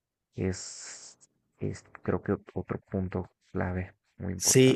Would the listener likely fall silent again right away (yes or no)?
no